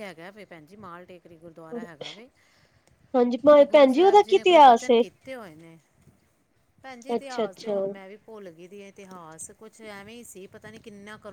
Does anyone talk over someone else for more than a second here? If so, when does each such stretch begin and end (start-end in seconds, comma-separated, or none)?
3.5-5.0